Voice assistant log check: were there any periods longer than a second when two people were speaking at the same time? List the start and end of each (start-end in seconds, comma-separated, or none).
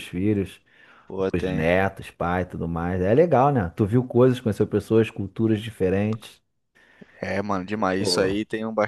none